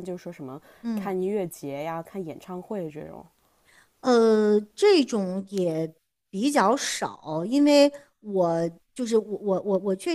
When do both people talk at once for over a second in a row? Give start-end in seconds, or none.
none